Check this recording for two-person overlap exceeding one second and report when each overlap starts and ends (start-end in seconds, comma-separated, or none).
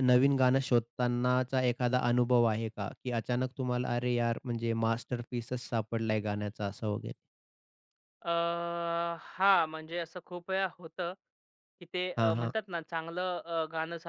none